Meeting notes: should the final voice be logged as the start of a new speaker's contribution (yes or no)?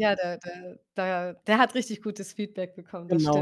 yes